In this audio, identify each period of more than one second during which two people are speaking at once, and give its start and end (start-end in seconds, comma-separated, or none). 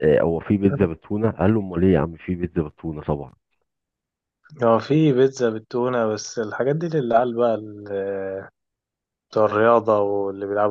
none